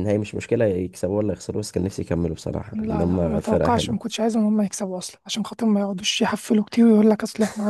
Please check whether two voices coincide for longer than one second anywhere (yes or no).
yes